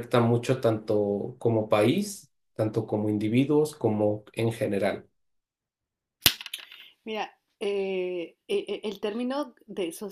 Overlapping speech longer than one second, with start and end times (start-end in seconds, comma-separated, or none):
none